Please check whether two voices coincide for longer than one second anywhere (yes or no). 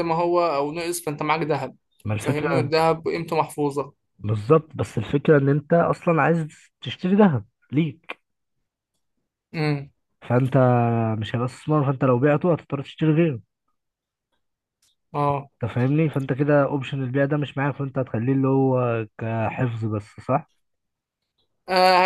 no